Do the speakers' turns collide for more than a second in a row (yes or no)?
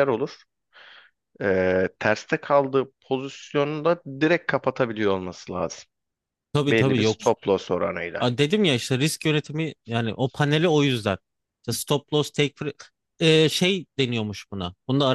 no